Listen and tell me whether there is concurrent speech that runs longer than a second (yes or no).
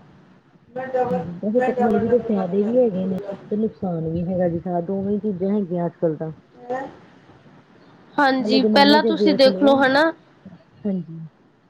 yes